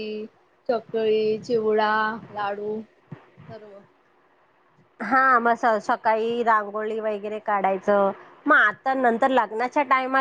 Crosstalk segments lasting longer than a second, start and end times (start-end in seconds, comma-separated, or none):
none